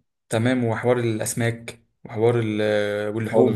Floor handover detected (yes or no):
yes